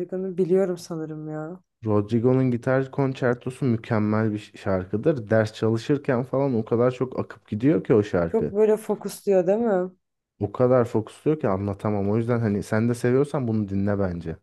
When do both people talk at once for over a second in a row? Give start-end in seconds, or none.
none